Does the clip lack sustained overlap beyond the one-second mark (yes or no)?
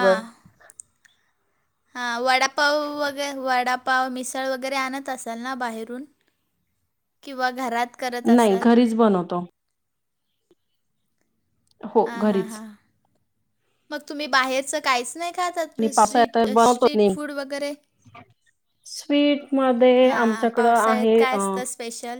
no